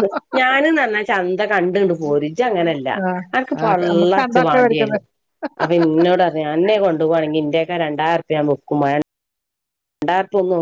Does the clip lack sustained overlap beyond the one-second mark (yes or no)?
no